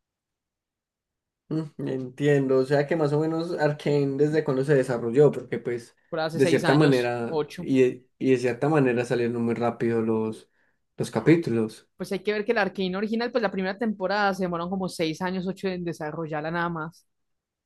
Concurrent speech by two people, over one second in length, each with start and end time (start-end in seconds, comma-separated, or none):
6.3-7.7